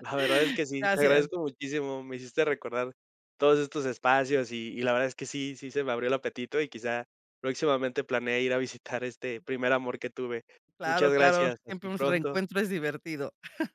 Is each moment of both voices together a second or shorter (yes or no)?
no